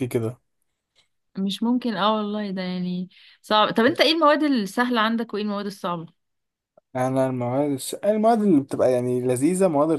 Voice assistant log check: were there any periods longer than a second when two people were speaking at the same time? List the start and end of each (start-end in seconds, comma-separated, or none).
none